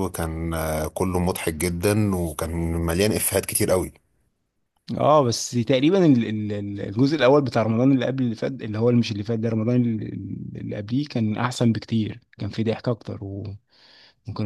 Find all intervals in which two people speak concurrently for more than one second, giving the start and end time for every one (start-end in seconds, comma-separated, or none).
none